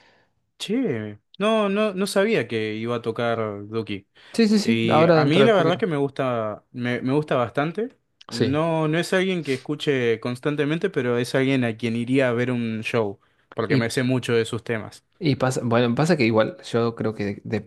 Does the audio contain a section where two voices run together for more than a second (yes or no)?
yes